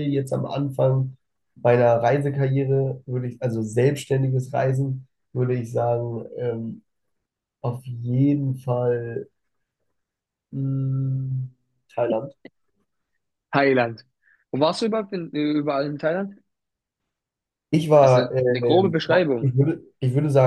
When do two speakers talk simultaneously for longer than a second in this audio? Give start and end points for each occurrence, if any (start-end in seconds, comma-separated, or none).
18.0-19.5